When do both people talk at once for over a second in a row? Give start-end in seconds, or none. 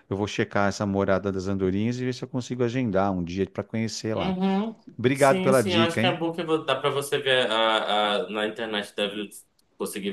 5.0-6.2